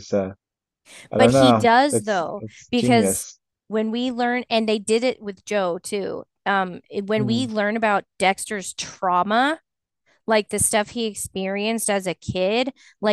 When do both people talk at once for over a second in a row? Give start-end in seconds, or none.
1.2-3.3